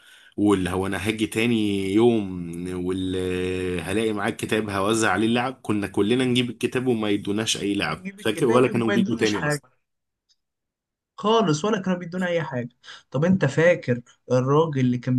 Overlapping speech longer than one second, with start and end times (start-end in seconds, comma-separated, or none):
7.7-9.6